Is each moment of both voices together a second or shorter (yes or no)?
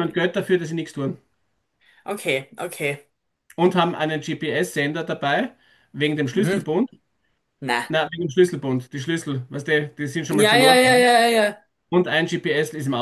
yes